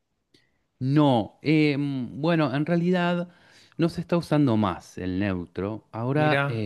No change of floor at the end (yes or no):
yes